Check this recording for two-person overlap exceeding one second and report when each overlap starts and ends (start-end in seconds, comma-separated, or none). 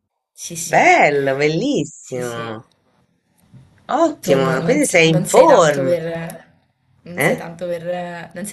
4.2-6.0